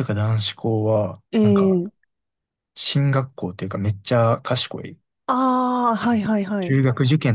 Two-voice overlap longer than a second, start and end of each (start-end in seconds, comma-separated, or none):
none